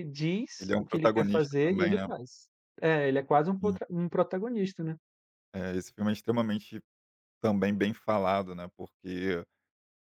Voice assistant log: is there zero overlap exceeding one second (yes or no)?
no